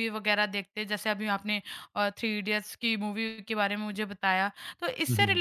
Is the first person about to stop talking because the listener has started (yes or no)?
no